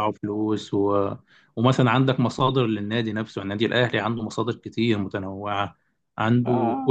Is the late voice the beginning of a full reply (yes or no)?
no